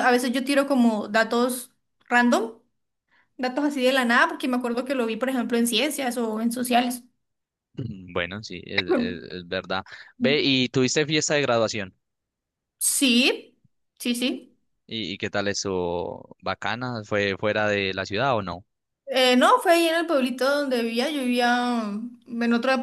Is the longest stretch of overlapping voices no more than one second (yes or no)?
yes